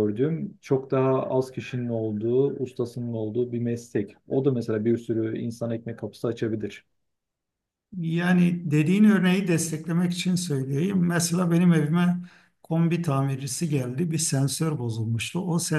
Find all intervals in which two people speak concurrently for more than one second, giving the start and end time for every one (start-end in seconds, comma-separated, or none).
none